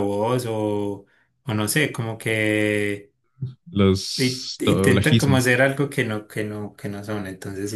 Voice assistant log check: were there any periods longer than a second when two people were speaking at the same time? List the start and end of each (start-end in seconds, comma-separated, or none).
4.2-5.5